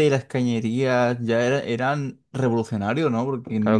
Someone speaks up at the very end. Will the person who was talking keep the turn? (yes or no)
no